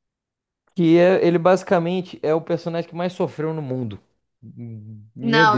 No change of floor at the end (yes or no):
no